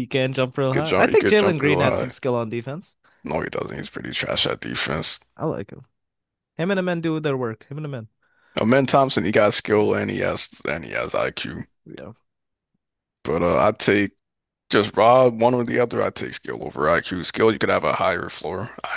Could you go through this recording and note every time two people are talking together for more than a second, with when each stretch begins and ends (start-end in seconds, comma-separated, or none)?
0.7-2.1